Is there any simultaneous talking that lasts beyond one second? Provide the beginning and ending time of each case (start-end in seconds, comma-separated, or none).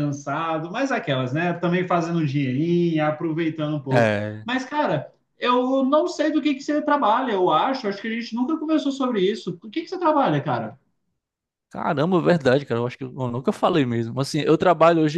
none